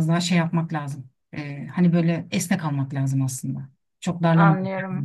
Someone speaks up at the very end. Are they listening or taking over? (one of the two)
taking over